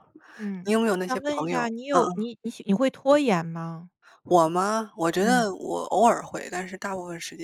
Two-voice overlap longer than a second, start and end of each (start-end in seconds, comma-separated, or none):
0.6-2.3